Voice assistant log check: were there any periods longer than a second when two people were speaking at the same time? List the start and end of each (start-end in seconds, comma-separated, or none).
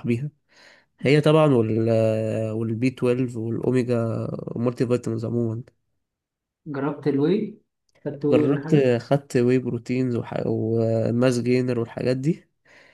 none